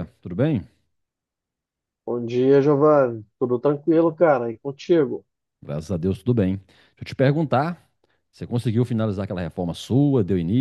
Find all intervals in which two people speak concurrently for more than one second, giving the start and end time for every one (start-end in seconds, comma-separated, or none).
none